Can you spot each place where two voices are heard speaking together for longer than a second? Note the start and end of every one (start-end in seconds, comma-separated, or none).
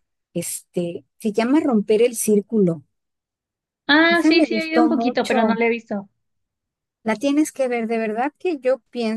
4.1-5.6